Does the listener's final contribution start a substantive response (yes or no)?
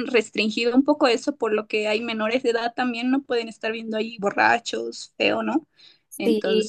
yes